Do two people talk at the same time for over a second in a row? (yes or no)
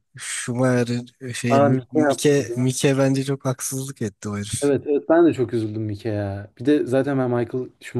yes